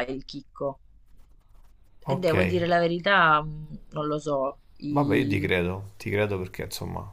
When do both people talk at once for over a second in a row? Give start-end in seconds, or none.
none